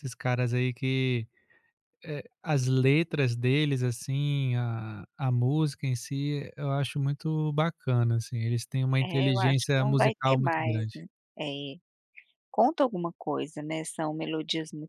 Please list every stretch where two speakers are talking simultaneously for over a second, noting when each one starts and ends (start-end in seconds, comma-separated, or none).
9.0-11.0